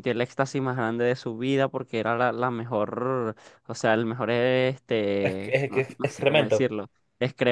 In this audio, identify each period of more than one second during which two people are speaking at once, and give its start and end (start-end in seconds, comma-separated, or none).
5.2-6.7